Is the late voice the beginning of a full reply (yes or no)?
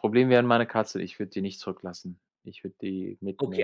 yes